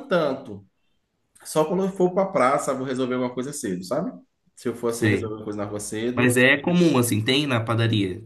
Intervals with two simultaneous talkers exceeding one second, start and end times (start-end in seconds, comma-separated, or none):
none